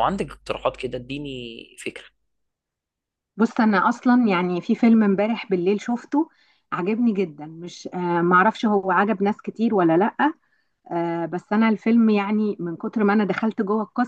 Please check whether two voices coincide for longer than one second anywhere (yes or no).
no